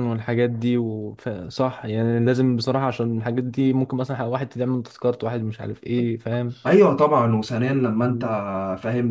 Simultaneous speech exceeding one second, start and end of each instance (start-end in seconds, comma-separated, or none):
none